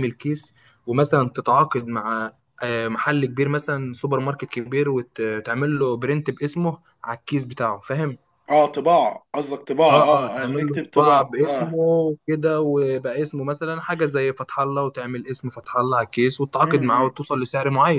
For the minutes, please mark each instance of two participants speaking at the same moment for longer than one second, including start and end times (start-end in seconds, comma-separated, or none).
9.9-11.8